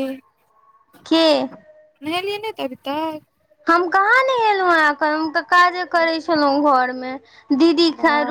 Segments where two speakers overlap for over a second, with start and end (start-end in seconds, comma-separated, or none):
none